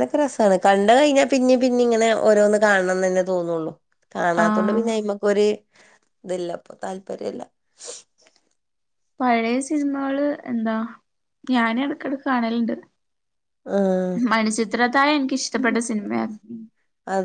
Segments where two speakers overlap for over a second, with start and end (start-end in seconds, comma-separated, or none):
none